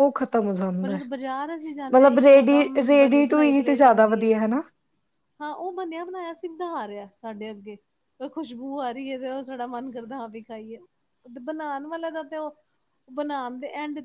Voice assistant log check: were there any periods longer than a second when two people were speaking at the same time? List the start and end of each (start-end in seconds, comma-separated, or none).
1.9-4.3